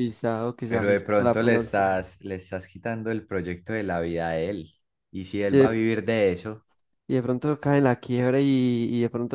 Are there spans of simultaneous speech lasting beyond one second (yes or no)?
yes